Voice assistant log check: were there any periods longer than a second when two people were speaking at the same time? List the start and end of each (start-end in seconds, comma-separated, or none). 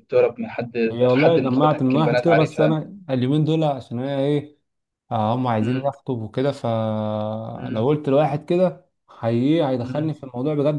0.9-2.7